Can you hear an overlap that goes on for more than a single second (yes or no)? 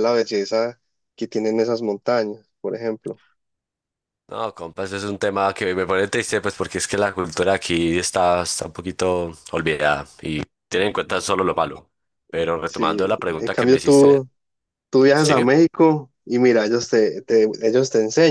yes